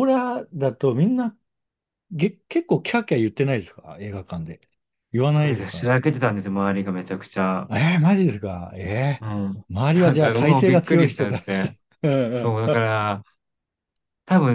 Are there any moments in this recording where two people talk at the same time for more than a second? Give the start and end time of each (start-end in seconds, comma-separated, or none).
9.7-11.8